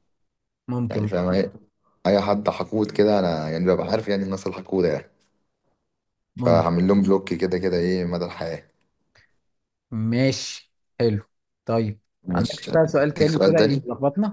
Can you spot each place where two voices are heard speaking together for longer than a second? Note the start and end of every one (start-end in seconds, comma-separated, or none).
12.2-13.8